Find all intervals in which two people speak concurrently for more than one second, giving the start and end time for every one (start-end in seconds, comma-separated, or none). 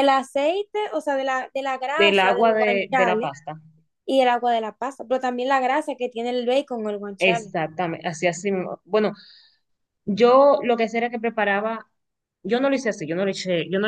2.0-3.3